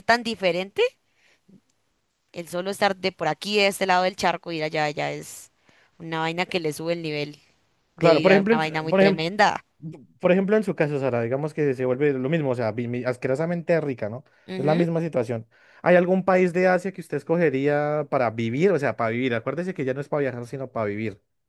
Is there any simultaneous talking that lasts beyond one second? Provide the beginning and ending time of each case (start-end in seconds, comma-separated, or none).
8.0-9.2